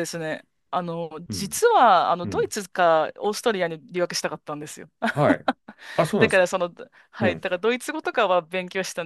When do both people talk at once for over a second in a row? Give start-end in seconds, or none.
none